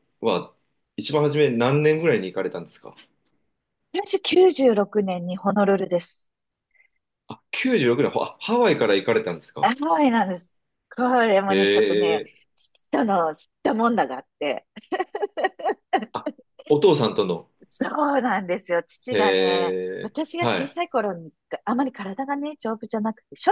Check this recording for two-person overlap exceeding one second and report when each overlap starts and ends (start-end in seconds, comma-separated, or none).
19.1-20.8